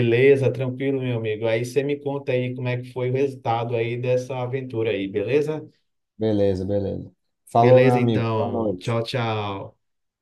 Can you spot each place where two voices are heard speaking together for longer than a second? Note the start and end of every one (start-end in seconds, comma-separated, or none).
7.6-9.0